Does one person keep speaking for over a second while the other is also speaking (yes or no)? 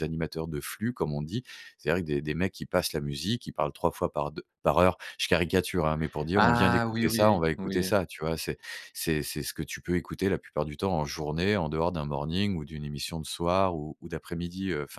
yes